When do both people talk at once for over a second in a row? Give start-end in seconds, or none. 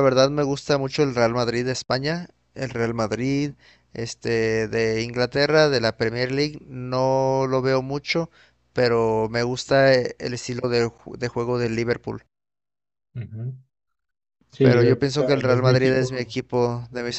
14.6-16.1